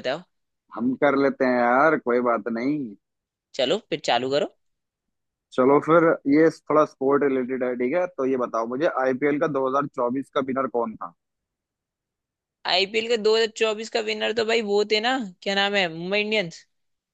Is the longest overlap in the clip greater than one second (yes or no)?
no